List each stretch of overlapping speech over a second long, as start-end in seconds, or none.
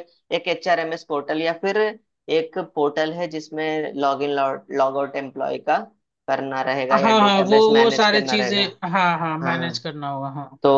6.9-8.6